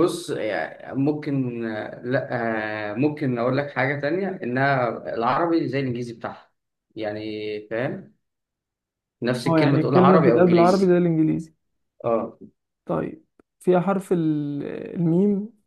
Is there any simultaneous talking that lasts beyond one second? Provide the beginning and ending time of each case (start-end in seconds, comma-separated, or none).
9.4-10.9